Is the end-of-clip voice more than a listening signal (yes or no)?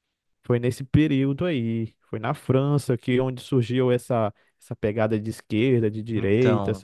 yes